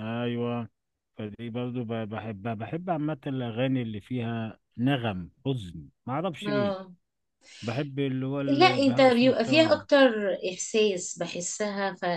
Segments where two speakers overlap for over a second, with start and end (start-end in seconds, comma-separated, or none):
8.5-9.8